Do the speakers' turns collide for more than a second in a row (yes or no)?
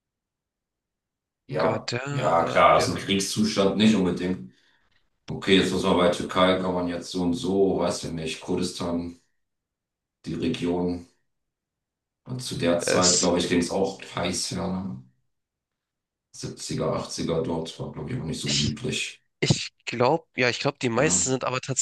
yes